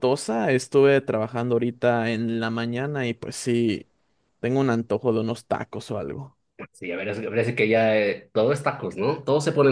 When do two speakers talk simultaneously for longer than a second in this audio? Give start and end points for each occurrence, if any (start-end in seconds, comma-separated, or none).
none